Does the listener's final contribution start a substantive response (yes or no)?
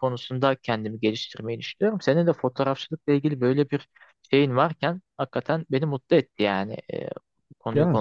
yes